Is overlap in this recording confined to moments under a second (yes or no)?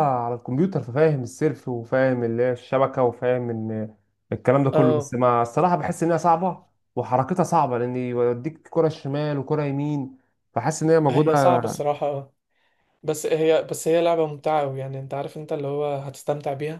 yes